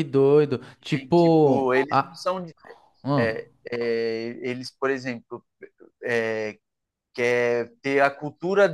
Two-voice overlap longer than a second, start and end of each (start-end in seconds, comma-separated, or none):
0.9-2.2